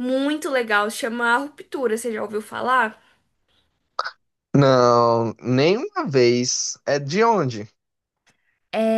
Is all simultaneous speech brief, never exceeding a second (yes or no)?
yes